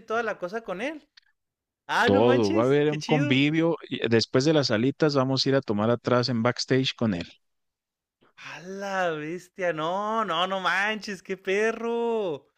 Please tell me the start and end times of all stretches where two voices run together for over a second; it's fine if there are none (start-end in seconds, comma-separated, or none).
2.0-3.4